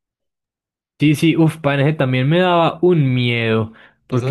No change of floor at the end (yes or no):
no